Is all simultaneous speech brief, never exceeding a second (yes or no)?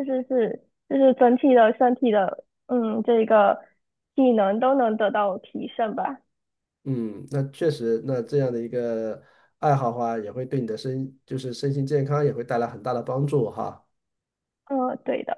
yes